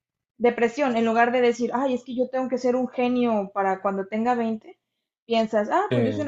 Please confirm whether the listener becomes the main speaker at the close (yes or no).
no